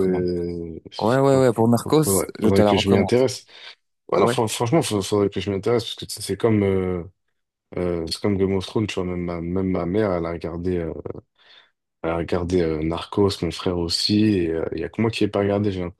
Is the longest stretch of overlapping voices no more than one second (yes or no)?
no